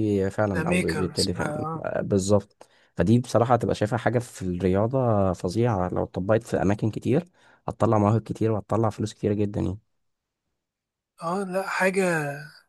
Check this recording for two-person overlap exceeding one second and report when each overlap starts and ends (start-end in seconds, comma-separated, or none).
0.6-1.8